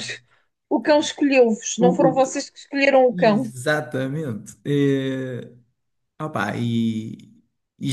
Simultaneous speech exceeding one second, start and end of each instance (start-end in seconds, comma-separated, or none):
none